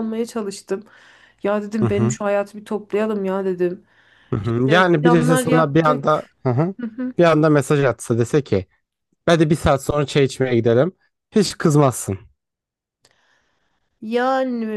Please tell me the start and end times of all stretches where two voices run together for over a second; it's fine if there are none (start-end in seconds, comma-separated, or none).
4.4-6.2